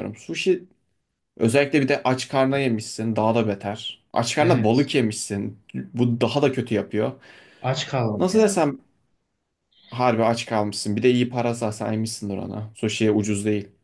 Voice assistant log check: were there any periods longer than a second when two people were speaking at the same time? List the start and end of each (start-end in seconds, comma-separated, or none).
none